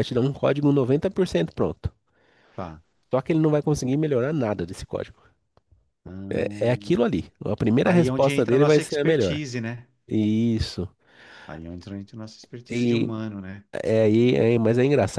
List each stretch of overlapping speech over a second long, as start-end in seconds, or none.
7.8-9.4